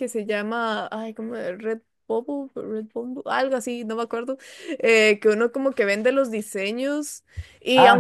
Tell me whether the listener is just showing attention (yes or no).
yes